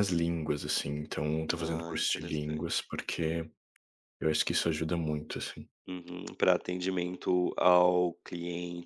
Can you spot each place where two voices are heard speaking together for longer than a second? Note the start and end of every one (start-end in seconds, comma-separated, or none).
1.6-2.9